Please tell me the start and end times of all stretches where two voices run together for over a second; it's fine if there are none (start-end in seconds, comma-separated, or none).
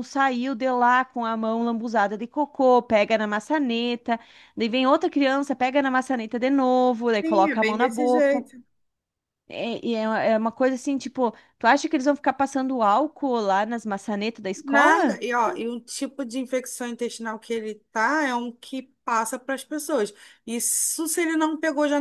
7.2-8.4